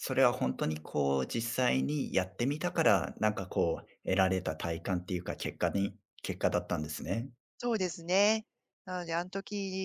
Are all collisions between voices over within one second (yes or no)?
yes